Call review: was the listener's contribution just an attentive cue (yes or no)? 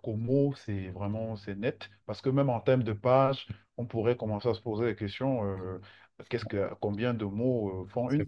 no